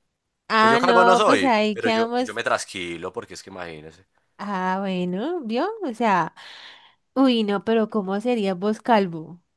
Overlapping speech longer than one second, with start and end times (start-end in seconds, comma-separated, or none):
0.6-2.4